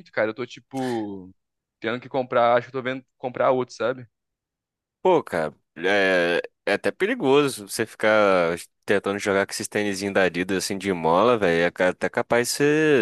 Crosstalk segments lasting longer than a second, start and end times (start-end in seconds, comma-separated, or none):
none